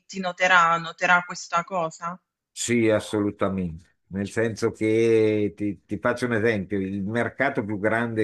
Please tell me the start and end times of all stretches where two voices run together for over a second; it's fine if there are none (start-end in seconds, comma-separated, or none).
none